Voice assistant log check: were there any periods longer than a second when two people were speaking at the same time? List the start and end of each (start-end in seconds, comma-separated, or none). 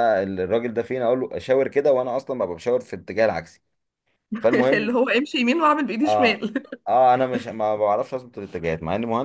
none